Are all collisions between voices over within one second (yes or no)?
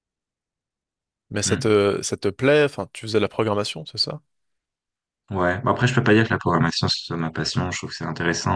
yes